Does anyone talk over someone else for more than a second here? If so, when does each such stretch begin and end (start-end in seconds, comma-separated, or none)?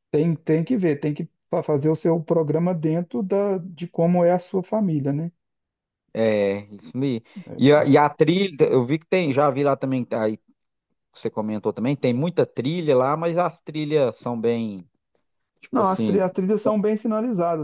none